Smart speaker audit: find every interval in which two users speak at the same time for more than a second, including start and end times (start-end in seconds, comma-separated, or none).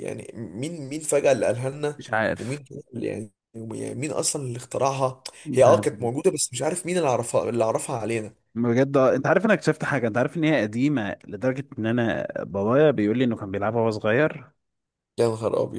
none